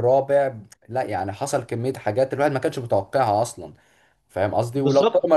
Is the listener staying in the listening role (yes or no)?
yes